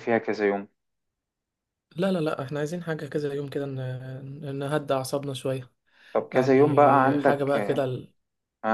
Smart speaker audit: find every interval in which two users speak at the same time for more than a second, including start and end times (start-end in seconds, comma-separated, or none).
6.3-7.8